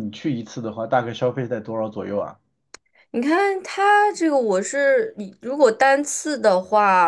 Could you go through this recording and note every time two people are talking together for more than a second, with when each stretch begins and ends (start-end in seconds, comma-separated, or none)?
none